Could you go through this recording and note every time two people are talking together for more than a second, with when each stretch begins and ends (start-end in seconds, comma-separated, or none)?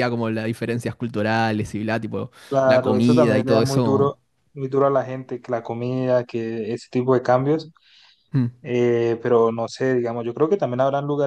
2.5-4.2